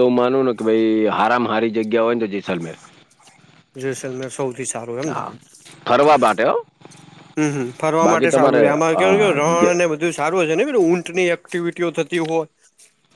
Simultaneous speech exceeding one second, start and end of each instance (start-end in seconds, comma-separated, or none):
8.0-9.8